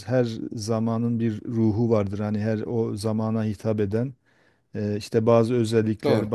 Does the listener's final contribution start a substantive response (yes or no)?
no